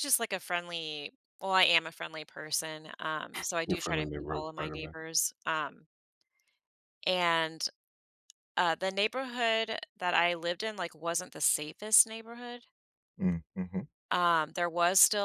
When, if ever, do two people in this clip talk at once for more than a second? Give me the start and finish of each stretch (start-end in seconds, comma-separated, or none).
3.7-4.9